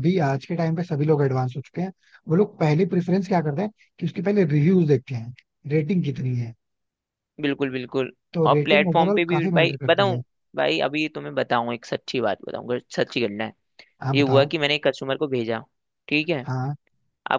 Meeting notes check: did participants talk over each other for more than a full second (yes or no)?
yes